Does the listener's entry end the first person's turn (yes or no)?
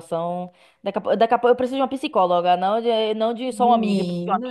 no